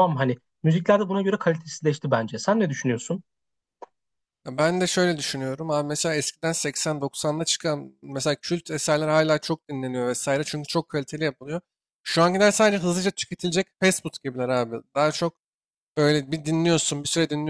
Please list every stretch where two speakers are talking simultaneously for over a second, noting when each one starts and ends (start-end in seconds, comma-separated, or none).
none